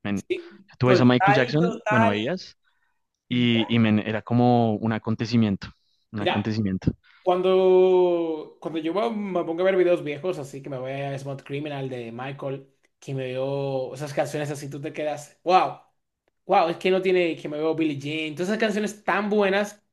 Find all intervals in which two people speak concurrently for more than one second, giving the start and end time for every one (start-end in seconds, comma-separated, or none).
0.8-2.2